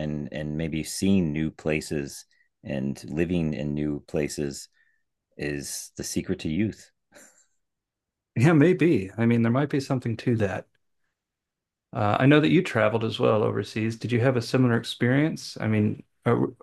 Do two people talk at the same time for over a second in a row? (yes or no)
no